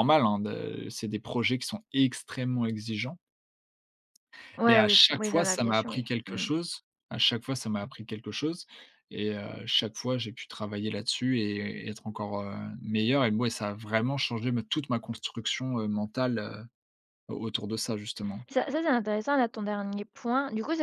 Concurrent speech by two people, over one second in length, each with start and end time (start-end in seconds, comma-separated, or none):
4.7-6.5